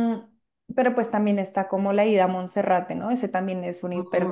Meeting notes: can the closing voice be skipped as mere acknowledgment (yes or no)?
no